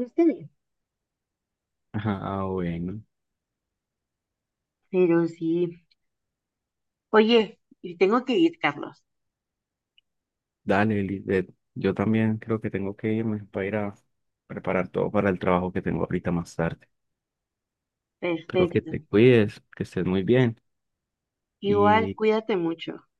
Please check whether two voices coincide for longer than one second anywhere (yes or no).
no